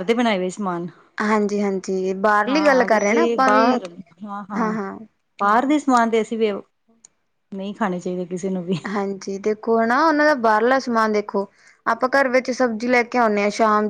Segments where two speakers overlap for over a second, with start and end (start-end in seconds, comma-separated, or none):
2.5-3.7